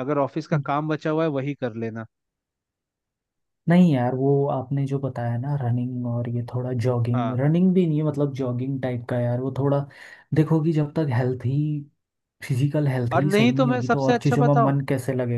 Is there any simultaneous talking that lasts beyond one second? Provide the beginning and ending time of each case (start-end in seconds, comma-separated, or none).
13.1-14.8